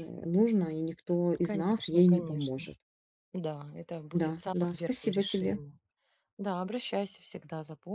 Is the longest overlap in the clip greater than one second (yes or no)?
yes